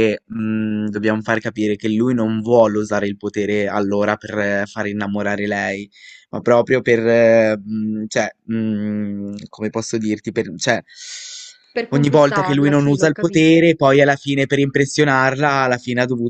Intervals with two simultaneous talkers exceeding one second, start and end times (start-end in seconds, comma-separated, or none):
11.9-13.6